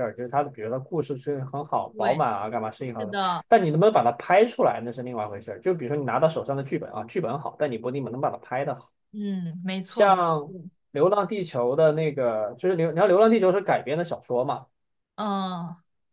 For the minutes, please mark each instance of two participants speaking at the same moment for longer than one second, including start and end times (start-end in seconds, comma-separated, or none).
none